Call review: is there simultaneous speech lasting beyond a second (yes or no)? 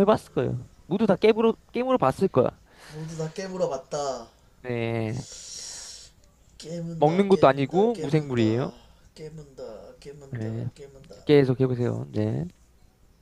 yes